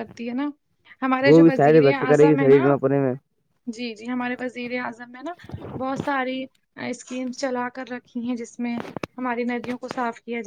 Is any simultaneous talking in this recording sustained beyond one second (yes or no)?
yes